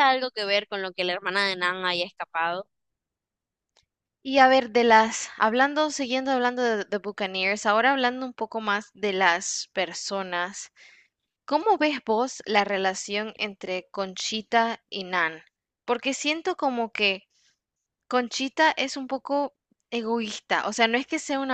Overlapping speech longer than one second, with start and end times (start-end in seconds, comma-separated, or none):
none